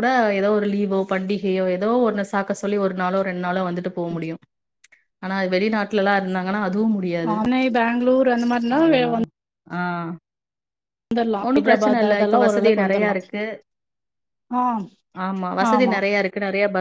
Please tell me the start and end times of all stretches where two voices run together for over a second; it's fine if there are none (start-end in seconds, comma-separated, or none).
11.5-13.2